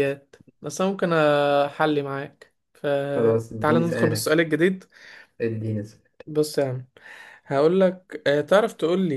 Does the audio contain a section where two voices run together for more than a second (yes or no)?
yes